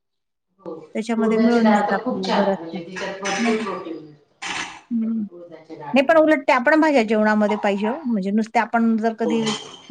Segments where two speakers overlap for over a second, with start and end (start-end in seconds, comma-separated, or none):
1.2-2.8